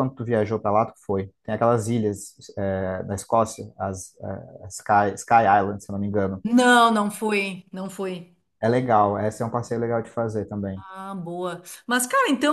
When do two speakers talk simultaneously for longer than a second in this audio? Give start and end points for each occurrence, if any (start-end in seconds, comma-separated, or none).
none